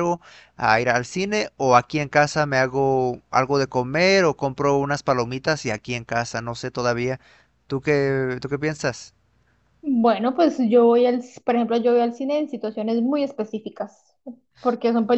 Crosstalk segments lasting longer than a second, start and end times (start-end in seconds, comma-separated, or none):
none